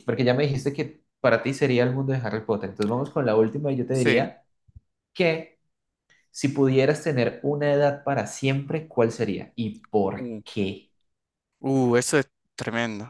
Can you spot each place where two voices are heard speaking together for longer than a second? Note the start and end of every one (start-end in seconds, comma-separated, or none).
none